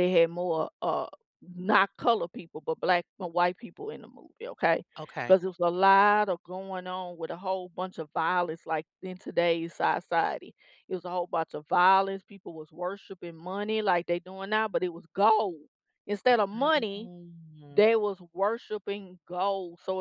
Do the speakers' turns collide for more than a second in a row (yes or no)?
no